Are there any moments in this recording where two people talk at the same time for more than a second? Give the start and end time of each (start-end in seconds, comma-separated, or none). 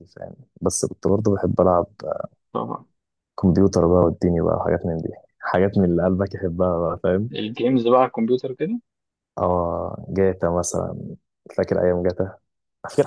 none